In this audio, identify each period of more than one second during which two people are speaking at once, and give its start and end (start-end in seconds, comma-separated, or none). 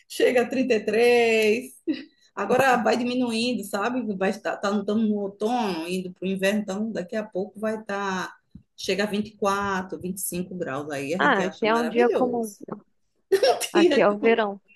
11.2-12.5